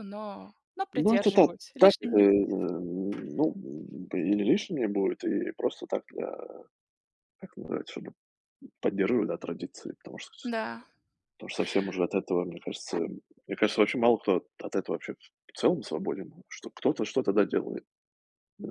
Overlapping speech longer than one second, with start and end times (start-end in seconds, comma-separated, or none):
0.9-2.5